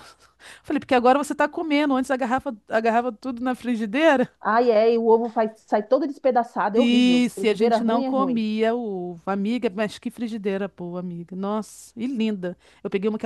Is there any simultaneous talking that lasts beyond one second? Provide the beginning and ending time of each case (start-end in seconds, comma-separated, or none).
6.8-8.5